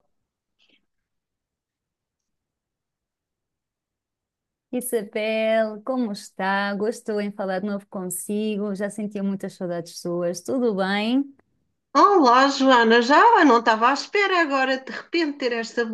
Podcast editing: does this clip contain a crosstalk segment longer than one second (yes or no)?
no